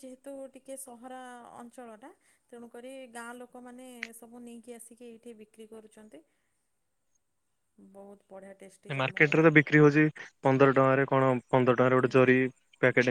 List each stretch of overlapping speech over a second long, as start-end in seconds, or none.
none